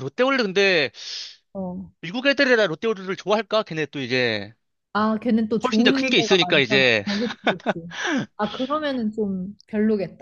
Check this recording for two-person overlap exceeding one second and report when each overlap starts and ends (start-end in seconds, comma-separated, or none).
5.6-7.0